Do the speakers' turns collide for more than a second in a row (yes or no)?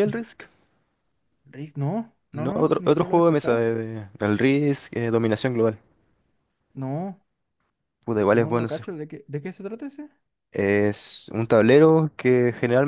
yes